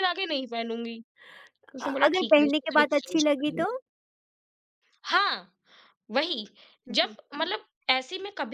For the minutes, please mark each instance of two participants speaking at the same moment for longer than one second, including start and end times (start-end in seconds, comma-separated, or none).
1.9-3.7